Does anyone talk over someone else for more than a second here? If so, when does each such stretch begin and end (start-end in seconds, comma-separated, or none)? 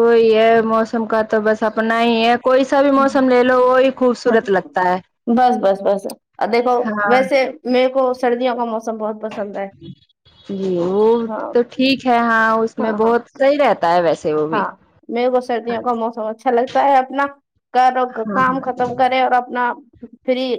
none